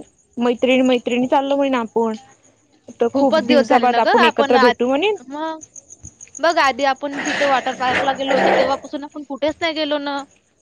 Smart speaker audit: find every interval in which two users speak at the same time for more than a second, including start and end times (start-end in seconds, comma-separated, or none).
3.1-4.7